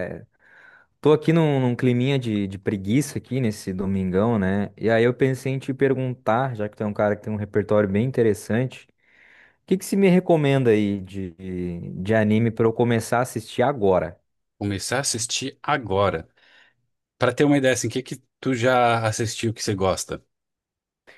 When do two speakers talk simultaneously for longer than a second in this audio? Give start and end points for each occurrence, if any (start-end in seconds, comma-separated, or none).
none